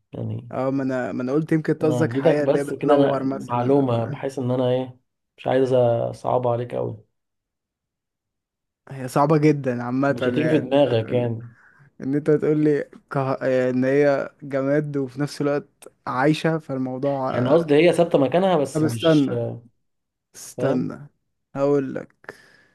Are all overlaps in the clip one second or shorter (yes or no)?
no